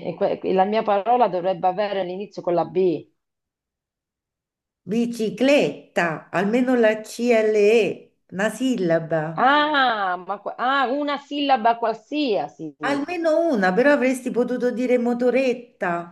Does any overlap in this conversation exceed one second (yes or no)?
no